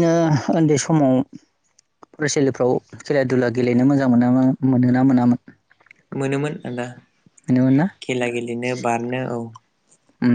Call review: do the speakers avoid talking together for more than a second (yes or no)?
yes